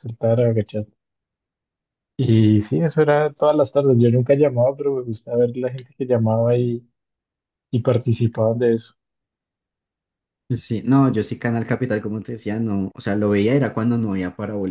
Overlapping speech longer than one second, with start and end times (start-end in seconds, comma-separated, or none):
none